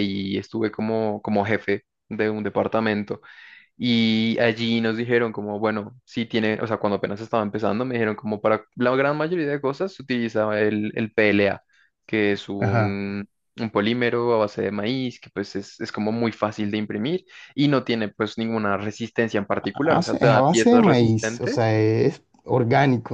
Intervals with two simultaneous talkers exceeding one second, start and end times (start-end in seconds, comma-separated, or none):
19.5-21.7